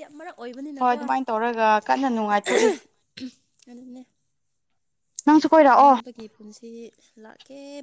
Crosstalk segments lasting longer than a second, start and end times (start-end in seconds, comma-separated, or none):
none